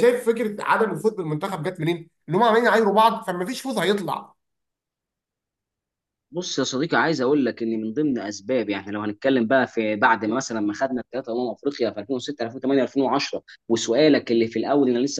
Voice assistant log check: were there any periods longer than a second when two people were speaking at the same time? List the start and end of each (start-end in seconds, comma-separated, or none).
none